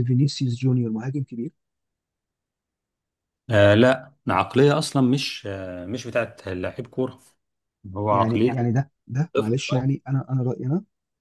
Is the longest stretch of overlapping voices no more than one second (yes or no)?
yes